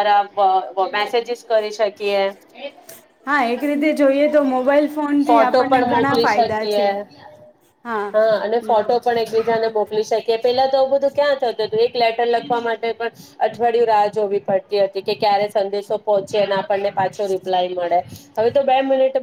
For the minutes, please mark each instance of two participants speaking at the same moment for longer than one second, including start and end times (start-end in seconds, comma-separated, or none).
5.3-6.8